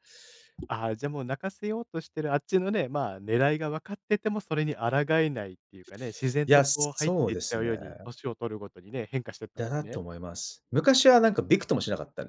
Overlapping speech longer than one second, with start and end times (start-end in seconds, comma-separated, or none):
6.5-7.8